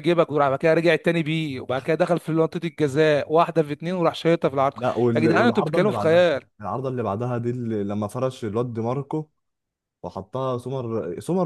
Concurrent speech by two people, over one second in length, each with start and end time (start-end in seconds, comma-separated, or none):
5.1-6.4